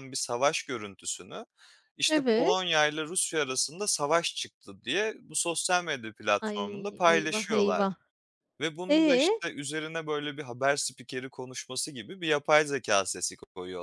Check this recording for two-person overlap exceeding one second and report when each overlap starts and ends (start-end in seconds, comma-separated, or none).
6.5-7.9